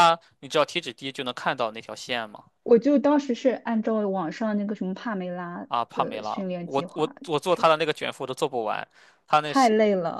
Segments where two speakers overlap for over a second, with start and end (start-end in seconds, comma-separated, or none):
5.7-7.7